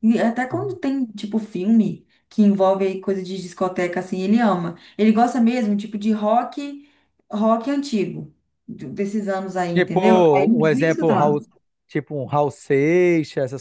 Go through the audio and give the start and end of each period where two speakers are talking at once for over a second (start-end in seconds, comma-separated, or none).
9.7-11.4